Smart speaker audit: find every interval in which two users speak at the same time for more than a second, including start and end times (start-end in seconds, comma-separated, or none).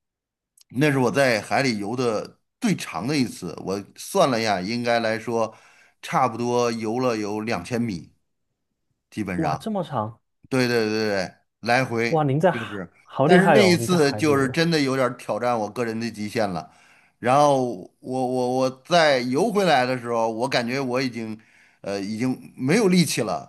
12.1-14.6